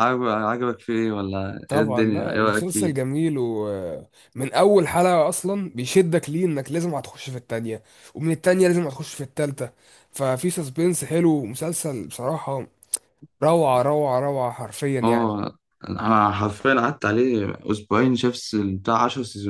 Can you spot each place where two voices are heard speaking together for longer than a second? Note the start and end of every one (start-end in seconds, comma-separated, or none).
1.7-3.0